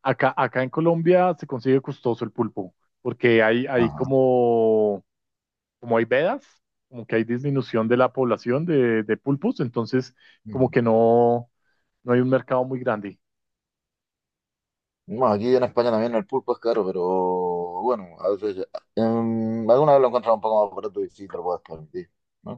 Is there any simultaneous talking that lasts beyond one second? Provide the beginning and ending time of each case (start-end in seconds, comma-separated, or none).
none